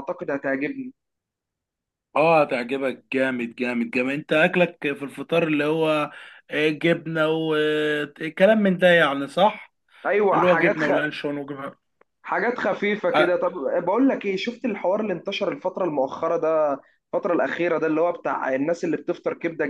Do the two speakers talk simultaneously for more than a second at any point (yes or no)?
no